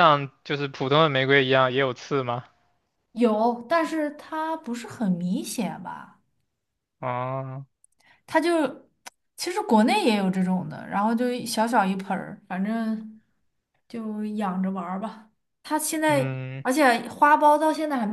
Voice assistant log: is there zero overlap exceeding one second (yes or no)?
yes